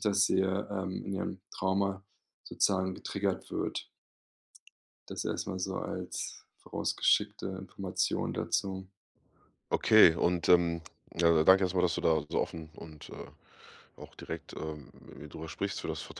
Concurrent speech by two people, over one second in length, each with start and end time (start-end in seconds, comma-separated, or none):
none